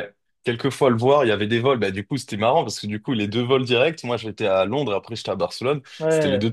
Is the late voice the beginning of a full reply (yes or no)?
no